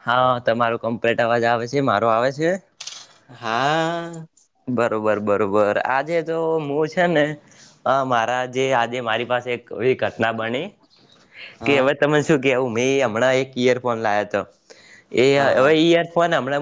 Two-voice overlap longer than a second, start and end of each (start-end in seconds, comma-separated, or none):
none